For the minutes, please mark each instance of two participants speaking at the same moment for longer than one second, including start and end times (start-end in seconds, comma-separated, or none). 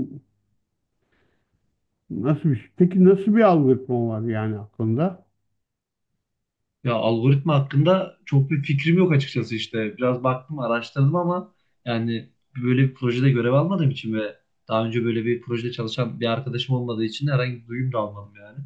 none